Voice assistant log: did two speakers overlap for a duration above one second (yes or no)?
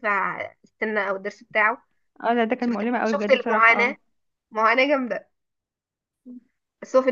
yes